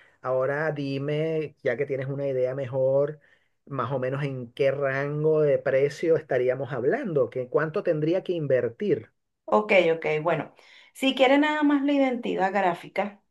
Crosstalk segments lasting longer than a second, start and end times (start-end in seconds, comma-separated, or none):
none